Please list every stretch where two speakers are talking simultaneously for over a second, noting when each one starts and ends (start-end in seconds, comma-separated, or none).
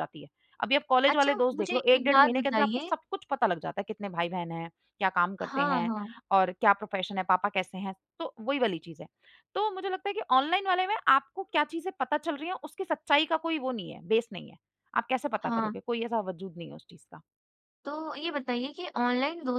1.1-2.9